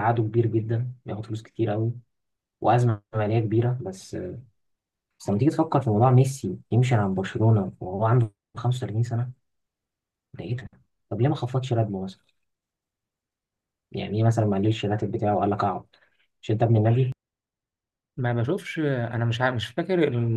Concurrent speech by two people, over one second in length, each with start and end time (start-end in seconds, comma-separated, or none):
none